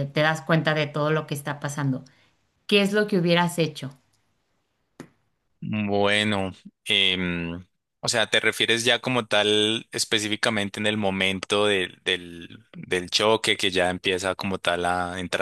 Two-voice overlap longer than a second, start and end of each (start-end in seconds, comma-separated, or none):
none